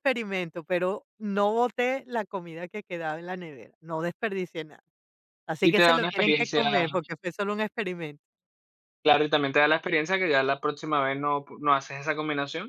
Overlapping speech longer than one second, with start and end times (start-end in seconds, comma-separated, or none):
5.6-6.9